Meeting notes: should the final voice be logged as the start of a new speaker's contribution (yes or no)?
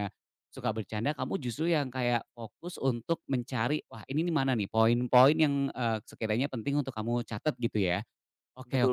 no